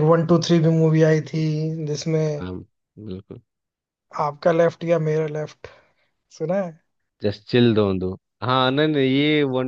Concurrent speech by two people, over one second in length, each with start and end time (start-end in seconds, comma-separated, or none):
none